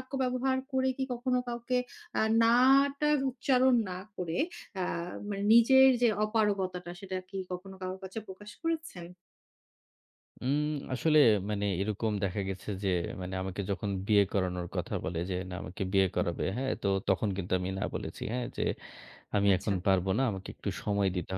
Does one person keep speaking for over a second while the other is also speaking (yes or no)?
no